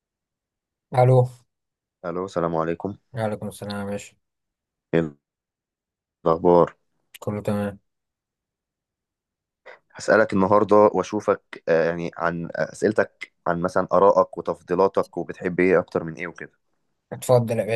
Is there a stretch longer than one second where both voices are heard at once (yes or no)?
no